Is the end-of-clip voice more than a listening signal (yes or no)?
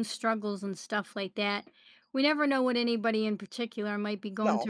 no